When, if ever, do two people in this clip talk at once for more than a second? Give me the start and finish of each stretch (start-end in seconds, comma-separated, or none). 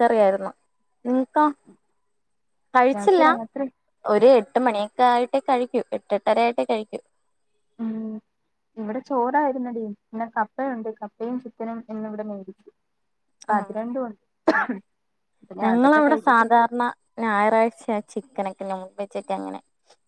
none